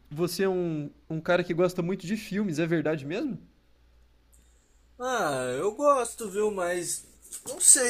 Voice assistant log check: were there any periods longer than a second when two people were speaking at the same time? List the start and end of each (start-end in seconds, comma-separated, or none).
none